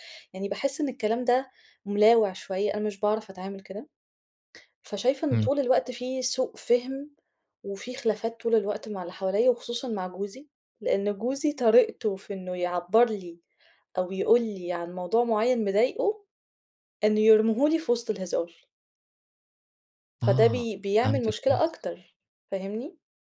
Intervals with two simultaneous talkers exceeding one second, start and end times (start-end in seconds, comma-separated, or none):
20.2-21.7